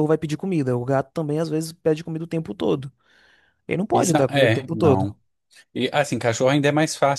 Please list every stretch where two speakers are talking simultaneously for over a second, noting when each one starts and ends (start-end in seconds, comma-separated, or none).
3.9-5.1